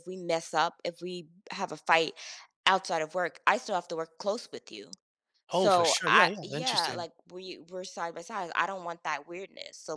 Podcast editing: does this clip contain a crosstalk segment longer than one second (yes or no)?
yes